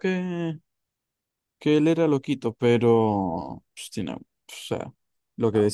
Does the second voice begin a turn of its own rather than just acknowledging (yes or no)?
no